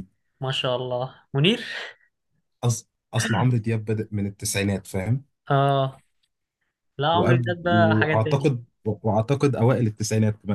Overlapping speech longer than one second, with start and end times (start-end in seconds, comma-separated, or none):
7.1-8.5